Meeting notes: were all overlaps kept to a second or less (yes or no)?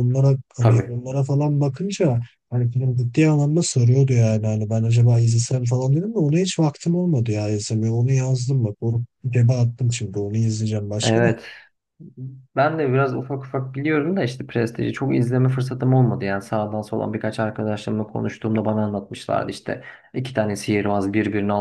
yes